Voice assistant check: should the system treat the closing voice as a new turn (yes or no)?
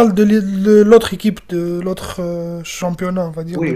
yes